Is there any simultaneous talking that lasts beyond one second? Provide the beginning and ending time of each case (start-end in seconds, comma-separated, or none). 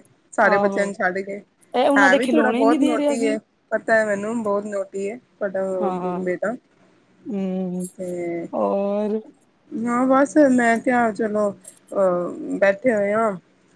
2.0-3.4